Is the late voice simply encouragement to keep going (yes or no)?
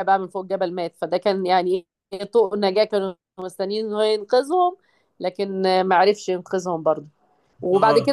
yes